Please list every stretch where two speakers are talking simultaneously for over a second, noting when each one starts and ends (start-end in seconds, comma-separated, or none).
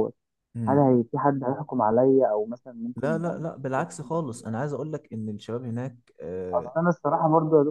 3.0-4.5